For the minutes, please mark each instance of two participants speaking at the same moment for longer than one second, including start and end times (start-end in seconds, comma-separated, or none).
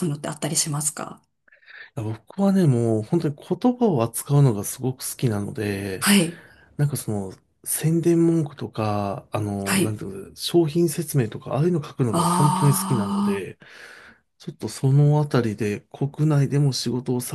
12.1-13.5